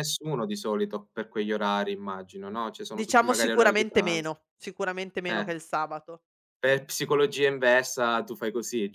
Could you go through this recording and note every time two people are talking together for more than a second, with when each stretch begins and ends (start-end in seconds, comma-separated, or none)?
2.9-4.3